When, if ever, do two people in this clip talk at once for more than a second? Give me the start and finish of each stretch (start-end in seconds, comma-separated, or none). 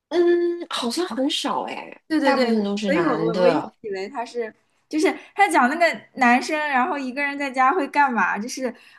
2.1-3.7